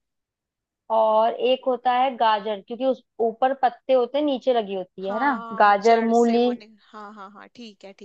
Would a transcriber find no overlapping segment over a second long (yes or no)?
no